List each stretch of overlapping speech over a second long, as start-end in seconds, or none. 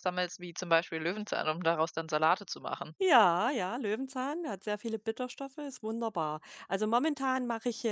none